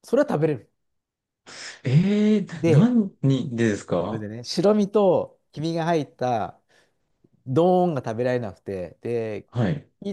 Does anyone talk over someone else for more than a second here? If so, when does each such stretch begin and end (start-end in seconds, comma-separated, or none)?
none